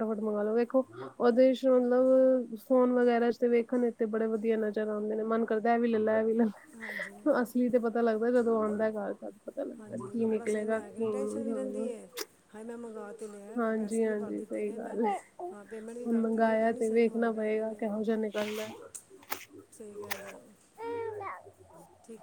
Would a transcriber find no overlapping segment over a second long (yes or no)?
no